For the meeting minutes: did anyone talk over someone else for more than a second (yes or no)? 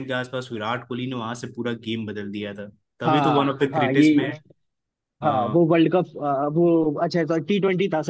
yes